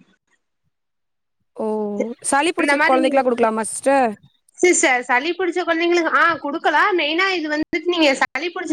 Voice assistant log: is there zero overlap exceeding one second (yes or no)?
yes